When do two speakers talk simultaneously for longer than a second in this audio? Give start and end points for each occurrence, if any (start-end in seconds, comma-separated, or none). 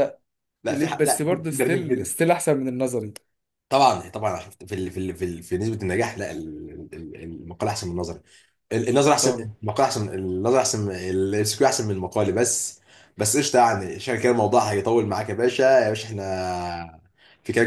0.7-2.1